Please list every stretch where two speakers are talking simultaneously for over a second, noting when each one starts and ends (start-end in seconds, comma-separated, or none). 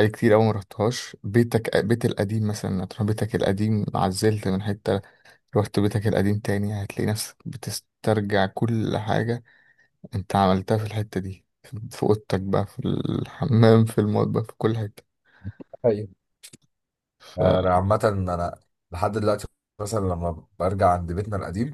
none